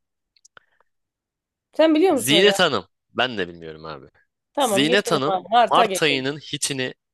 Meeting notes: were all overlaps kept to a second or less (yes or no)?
no